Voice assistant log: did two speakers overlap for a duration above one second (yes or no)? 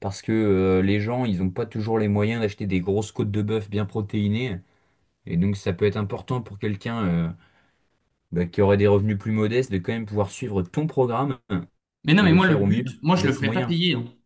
yes